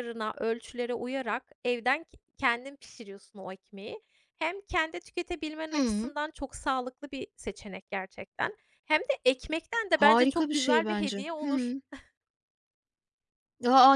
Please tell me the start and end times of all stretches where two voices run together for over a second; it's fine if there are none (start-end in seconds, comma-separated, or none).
9.9-11.8